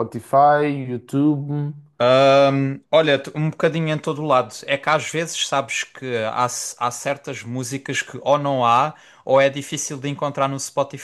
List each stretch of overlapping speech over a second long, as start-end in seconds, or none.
none